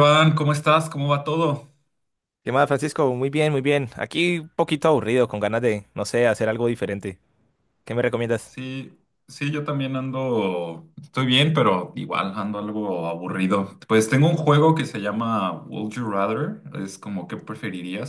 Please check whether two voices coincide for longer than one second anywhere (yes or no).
no